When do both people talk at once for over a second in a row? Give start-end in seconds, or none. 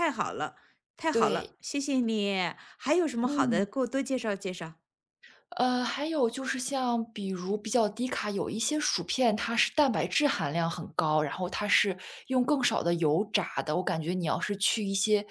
none